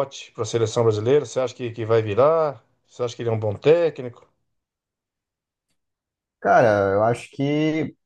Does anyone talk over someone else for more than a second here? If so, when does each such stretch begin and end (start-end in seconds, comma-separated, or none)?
none